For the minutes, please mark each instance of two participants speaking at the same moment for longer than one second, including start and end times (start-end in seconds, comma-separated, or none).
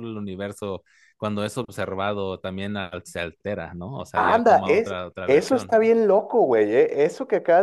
4.1-5.8